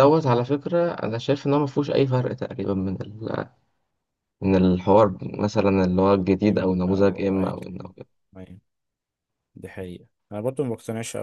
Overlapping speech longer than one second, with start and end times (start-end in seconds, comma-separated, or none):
6.5-7.9